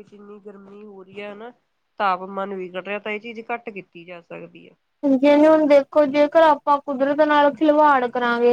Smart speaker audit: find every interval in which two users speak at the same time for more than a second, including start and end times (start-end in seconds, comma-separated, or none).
none